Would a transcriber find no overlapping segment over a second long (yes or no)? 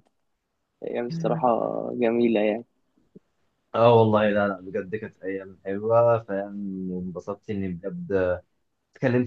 yes